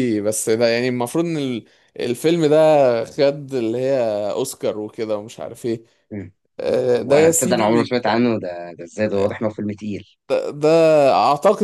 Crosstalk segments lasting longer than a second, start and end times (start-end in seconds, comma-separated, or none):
7.0-8.2